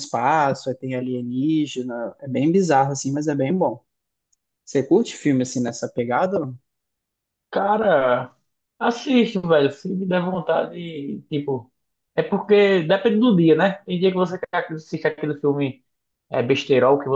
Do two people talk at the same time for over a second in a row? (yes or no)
no